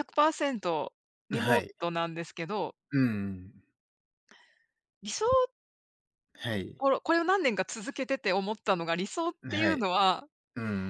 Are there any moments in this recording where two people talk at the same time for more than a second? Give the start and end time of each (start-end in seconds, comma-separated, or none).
none